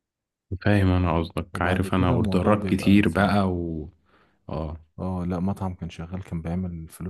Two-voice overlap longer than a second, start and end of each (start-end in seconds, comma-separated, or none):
1.6-3.4